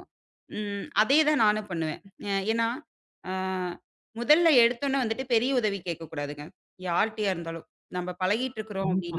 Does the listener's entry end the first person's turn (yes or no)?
no